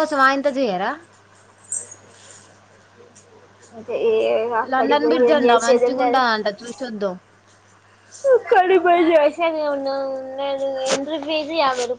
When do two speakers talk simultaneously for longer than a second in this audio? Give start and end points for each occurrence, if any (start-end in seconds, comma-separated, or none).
4.7-6.2